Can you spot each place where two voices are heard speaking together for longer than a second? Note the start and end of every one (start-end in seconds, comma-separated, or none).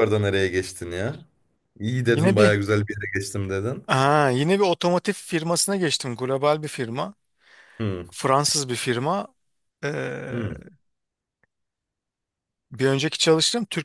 none